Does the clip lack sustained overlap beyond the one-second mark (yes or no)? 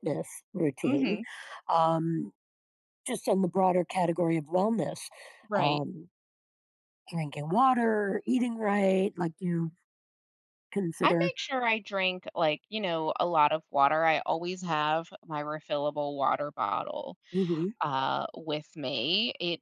yes